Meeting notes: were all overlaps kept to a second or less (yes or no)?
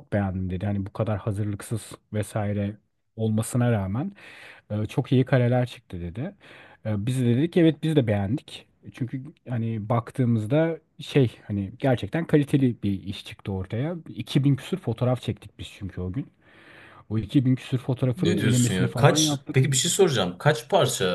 no